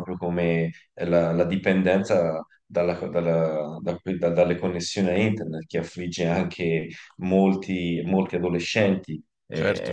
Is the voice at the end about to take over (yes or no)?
yes